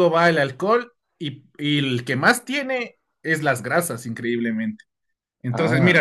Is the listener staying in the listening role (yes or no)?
yes